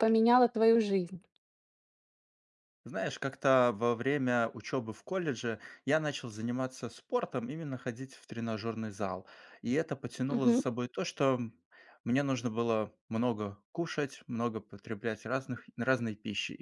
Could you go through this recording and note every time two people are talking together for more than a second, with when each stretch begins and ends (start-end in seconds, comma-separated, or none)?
none